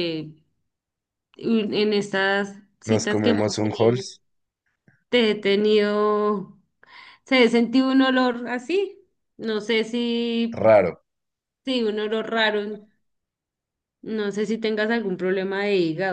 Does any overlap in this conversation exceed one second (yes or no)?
yes